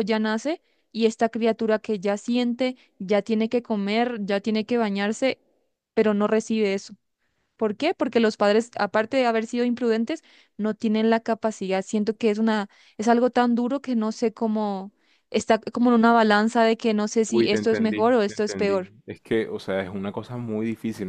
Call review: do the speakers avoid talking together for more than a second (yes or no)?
no